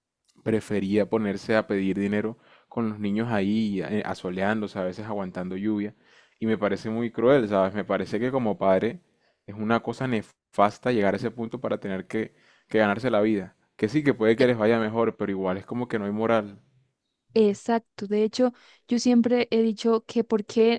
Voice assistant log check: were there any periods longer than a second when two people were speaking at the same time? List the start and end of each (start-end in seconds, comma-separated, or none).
none